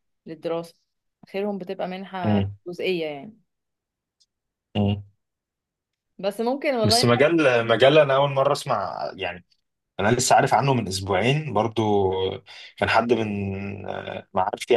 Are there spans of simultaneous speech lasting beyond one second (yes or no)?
no